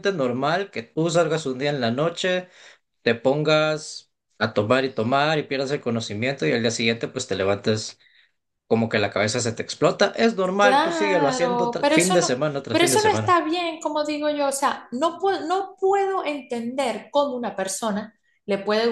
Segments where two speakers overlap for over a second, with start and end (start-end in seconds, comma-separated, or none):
10.6-13.3